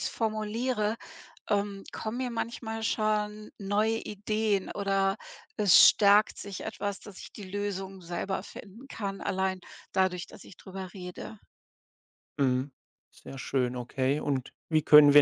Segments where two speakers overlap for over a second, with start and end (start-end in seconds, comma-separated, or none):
none